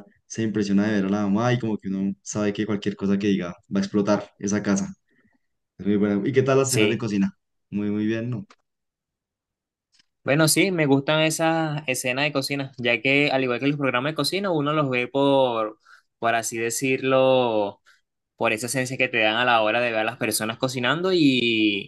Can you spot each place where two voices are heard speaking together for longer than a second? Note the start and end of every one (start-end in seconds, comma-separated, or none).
none